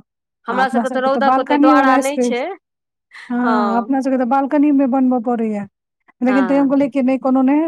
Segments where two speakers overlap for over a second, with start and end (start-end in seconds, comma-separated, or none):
0.5-2.4